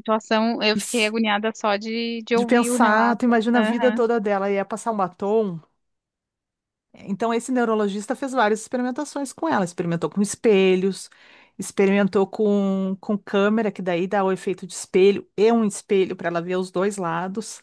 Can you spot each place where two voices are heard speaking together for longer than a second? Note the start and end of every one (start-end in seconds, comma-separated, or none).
2.3-4.0